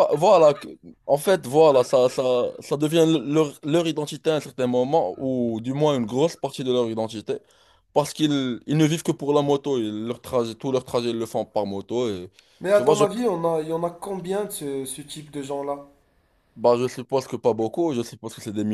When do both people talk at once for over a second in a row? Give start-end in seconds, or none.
none